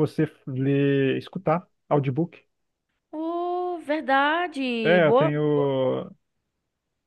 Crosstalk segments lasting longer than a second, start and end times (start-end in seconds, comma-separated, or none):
none